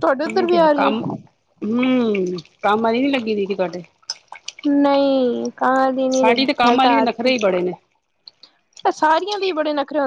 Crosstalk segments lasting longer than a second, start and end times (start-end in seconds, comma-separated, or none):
6.1-7.5